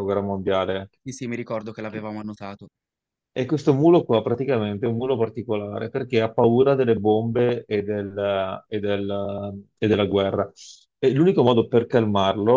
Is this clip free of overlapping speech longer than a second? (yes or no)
yes